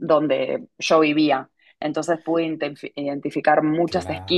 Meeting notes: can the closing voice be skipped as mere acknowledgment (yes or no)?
yes